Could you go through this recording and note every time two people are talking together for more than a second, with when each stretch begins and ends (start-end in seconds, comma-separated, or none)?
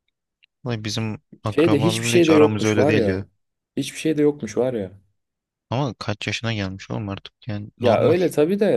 1.4-3.2